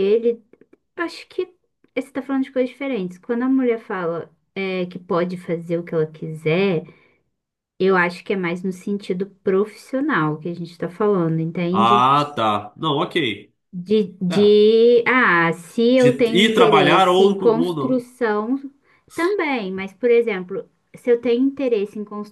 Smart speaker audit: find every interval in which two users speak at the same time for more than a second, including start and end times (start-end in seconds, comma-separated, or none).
16.0-18.0